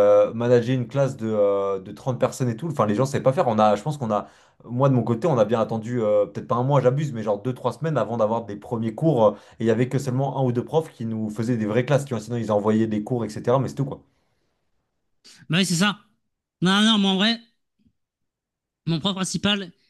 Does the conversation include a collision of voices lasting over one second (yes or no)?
no